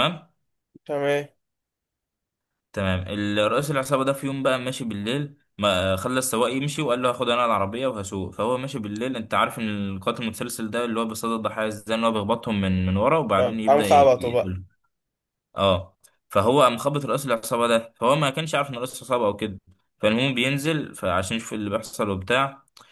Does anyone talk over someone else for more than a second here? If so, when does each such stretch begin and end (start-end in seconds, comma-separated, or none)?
13.4-14.6